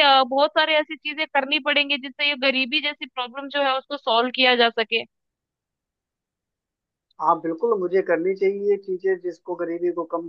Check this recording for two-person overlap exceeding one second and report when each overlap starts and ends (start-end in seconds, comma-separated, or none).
none